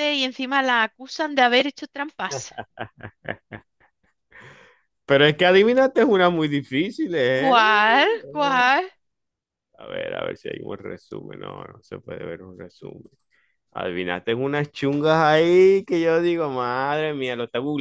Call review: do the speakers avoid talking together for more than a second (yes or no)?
yes